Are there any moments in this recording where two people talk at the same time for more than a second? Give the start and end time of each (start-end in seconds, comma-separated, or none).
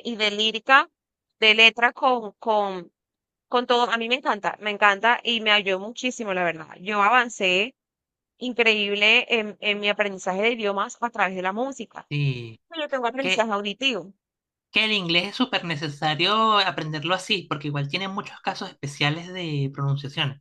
none